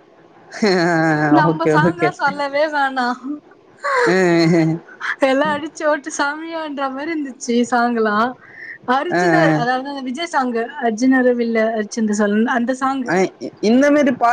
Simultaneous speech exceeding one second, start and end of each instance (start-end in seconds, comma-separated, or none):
none